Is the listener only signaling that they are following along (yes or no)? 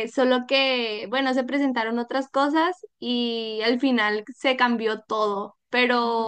yes